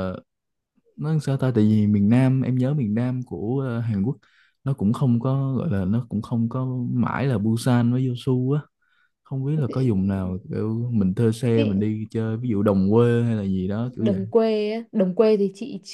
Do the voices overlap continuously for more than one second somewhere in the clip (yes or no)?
no